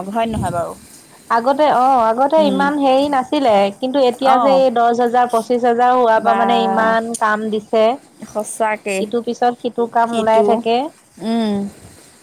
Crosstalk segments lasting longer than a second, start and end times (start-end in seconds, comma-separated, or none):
none